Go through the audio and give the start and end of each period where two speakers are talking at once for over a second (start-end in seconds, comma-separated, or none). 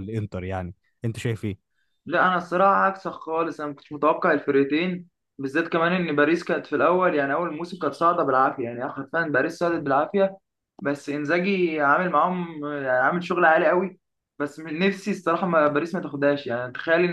none